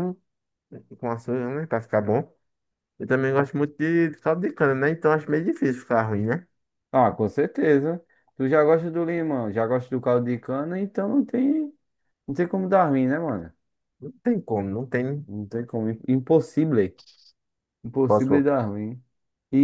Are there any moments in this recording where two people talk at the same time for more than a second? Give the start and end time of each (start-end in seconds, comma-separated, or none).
none